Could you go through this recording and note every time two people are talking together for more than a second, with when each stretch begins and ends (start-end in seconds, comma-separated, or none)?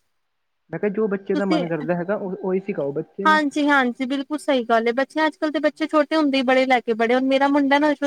none